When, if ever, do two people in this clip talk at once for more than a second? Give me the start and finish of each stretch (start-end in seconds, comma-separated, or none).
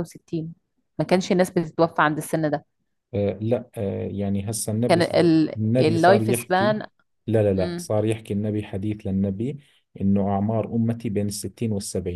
4.9-6.8